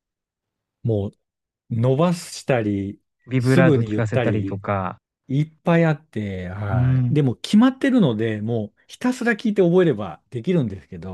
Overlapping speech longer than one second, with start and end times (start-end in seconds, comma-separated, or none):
3.4-4.6